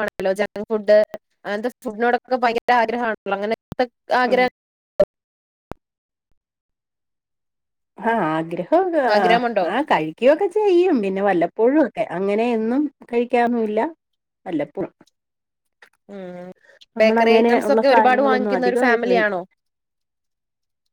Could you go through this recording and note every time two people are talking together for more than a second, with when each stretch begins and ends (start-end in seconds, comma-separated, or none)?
17.7-19.4